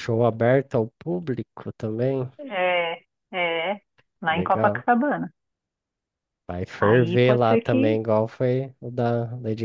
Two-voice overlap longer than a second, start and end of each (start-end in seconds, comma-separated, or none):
6.8-8.0